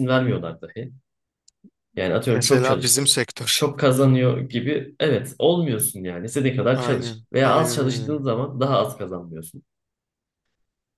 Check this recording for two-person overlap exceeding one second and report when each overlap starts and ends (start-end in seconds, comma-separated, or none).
2.2-3.6, 6.7-8.2